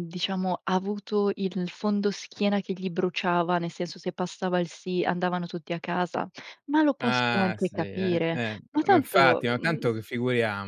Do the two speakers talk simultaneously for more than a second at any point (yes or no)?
yes